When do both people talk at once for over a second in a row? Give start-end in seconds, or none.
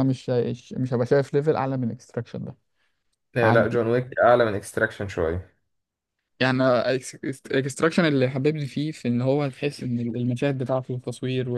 none